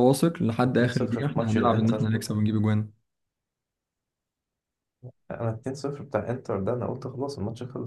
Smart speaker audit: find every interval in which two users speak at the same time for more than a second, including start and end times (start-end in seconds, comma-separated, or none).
0.7-2.1